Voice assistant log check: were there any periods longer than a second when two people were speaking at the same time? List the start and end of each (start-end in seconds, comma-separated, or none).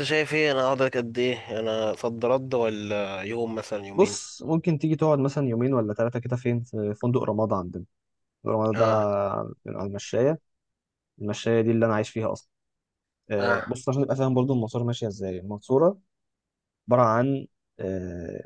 none